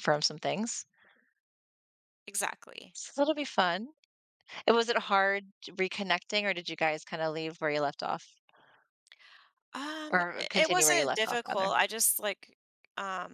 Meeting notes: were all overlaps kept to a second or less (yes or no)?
no